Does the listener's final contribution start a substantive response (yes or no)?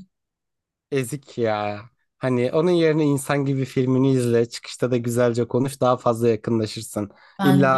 no